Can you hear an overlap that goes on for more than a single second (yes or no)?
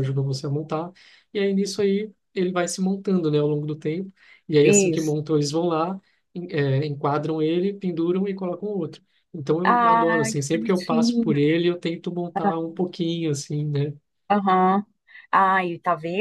yes